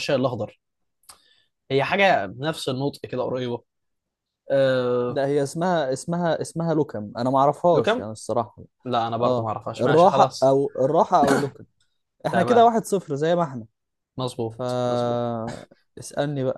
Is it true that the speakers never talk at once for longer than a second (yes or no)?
no